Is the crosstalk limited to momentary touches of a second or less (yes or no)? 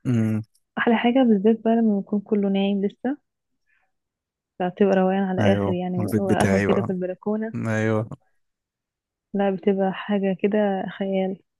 no